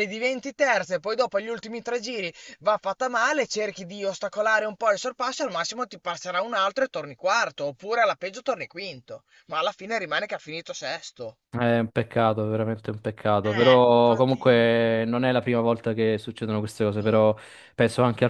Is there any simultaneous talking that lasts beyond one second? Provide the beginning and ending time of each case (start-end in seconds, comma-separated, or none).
13.4-14.9